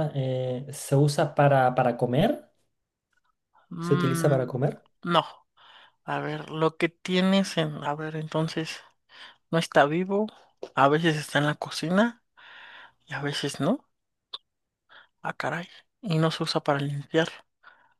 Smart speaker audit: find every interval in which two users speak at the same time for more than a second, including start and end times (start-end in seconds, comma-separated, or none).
none